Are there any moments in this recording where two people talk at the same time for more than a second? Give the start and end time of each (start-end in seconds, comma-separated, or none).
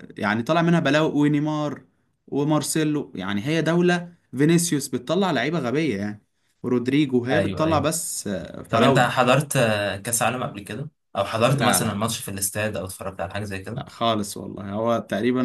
none